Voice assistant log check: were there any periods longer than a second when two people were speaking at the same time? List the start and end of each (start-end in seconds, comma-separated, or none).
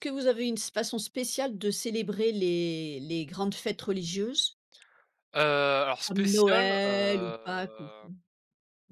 6.1-8.1